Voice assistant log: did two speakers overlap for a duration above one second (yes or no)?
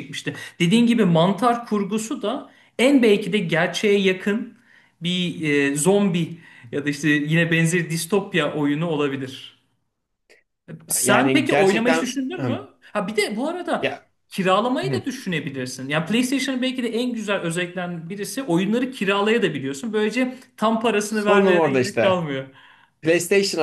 yes